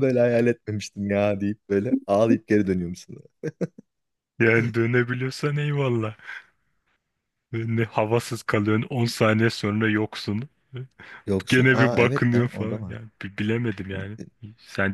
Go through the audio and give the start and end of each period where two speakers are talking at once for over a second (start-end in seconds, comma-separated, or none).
11.5-13.0